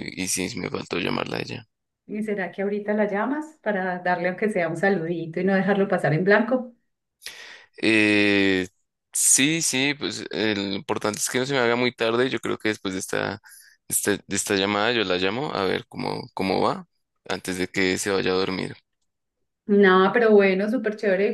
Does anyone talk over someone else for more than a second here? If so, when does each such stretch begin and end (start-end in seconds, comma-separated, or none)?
none